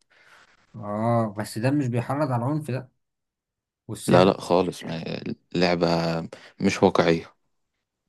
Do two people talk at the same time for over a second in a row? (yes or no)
no